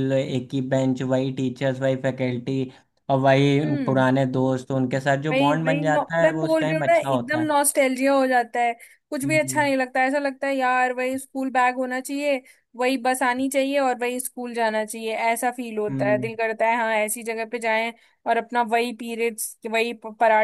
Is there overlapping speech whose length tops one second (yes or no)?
yes